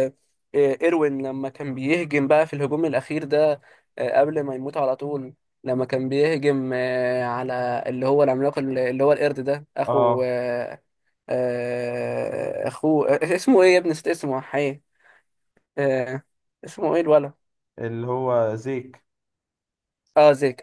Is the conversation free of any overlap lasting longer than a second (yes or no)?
yes